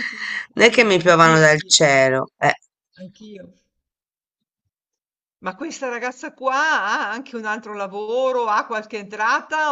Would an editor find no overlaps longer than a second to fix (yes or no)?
no